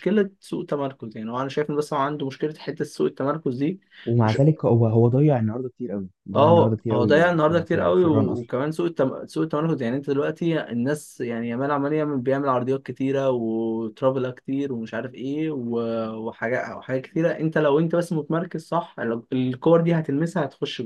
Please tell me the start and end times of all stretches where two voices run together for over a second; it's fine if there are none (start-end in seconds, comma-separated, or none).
6.3-8.5